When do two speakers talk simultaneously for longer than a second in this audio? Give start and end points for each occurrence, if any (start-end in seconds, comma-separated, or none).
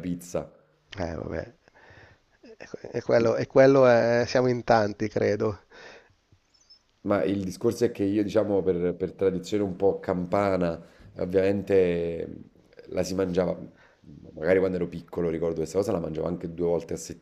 none